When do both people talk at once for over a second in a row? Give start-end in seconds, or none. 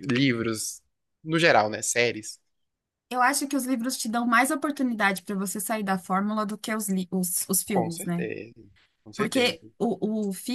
none